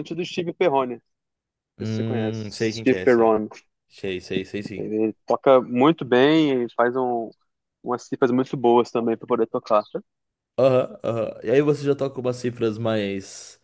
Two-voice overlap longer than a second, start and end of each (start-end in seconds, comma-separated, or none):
1.8-3.3